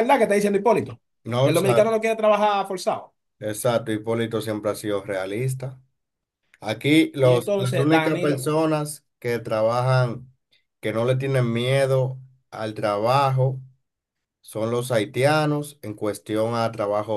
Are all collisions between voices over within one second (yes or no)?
no